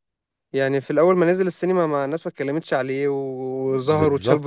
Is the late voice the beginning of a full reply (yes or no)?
yes